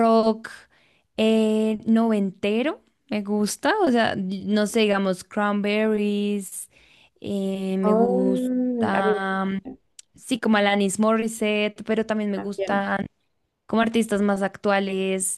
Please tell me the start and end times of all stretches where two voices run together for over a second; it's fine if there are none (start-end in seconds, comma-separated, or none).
7.8-9.1